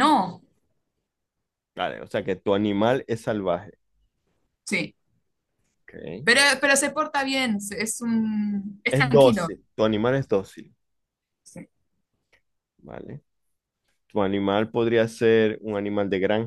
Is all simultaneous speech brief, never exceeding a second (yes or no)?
yes